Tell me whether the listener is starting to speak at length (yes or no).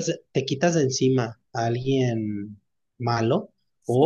no